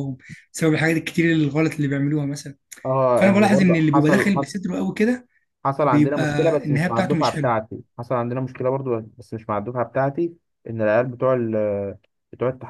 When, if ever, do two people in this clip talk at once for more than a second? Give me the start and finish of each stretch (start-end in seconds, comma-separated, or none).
3.2-4.5, 5.8-7.5